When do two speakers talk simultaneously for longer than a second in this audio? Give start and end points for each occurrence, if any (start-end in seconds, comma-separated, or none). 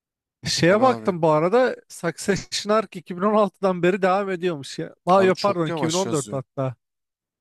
5.2-6.4